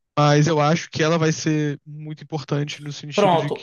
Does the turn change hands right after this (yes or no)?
yes